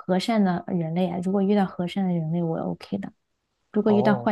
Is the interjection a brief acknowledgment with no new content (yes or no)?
yes